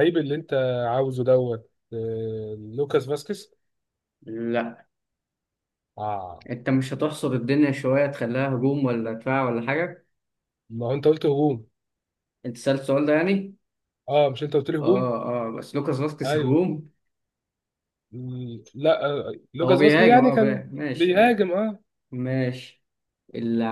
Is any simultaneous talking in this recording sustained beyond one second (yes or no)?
yes